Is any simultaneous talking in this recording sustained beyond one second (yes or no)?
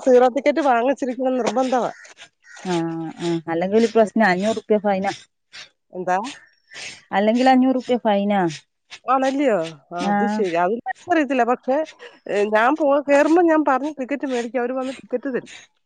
no